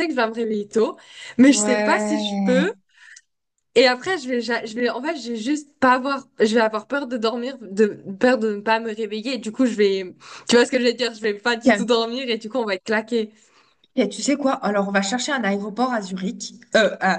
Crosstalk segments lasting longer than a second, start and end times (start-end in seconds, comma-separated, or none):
1.5-2.7